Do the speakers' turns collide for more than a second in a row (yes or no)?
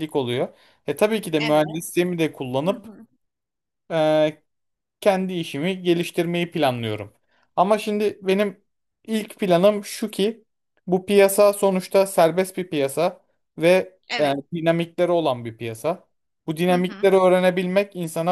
no